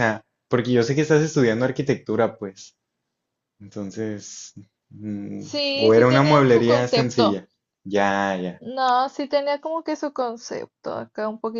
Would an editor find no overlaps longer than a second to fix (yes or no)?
no